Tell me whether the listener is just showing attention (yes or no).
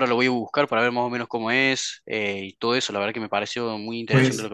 no